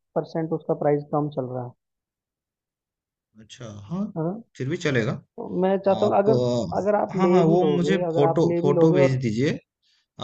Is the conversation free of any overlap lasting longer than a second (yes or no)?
no